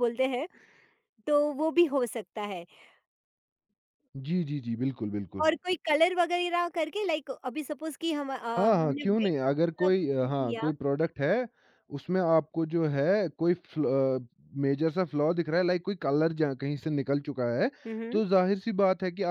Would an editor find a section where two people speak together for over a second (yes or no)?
yes